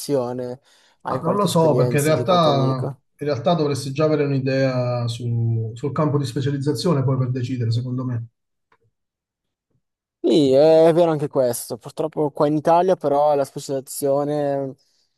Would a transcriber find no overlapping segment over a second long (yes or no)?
no